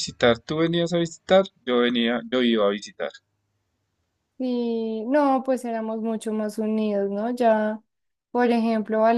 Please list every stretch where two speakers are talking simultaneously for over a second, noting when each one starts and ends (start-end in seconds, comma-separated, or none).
none